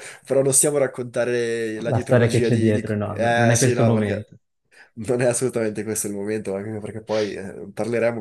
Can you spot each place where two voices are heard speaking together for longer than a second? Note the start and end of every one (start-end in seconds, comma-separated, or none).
1.9-4.3